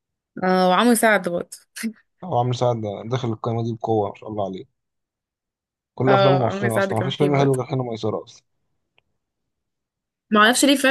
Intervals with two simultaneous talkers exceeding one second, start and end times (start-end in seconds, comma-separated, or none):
6.1-7.6